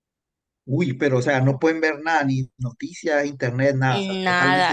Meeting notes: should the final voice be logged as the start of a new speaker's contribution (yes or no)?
yes